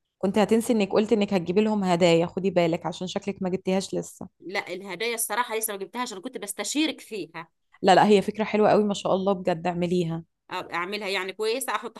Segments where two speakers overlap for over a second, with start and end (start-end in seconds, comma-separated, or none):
none